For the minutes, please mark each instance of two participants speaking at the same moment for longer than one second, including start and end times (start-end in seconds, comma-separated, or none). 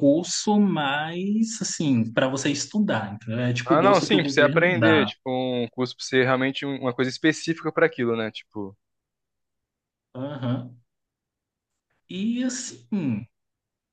3.6-5.1